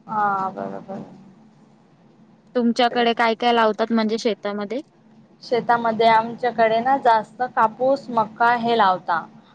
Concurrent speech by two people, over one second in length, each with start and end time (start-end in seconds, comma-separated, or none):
none